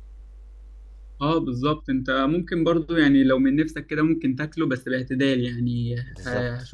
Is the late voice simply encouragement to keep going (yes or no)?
yes